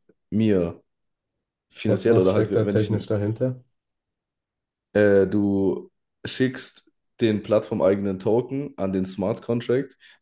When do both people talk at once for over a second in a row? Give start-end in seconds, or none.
1.8-3.1